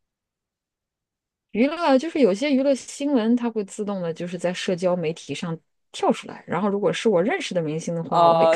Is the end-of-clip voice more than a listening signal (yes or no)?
yes